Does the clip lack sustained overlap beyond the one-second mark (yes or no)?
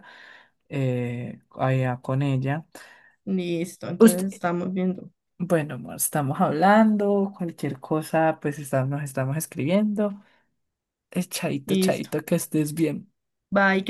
yes